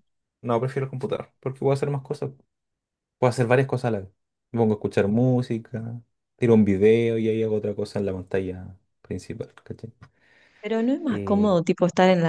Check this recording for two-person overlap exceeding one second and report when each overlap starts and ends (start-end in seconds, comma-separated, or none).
none